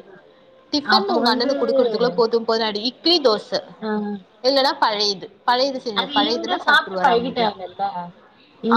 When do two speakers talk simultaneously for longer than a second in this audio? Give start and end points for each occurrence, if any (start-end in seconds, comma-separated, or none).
6.0-7.5